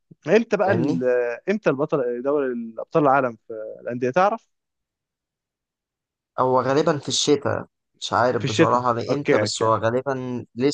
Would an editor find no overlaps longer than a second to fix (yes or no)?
no